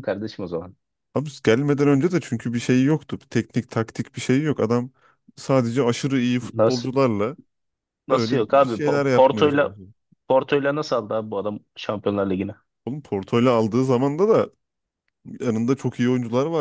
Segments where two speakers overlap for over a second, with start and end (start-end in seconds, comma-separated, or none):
8.1-9.8